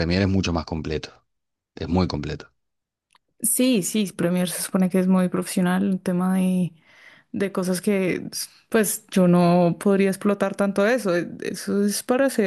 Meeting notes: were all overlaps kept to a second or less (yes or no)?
yes